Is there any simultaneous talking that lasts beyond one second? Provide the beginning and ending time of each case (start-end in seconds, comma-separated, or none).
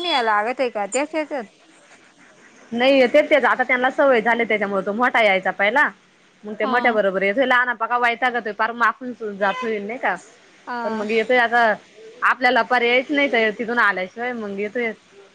none